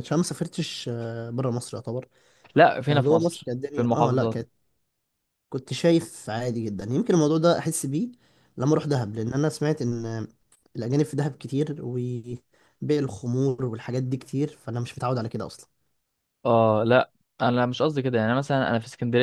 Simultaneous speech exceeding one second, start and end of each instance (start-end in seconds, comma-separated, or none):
2.8-4.4